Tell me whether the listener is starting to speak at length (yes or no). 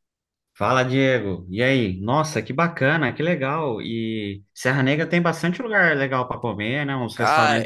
yes